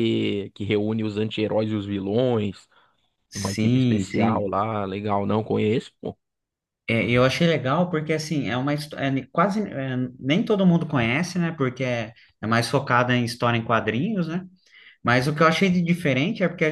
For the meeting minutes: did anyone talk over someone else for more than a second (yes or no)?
yes